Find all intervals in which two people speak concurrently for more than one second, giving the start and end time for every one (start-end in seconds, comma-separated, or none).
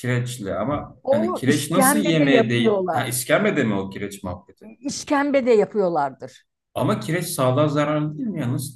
1.0-3.1